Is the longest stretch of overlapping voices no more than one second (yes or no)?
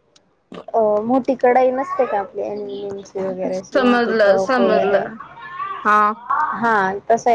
no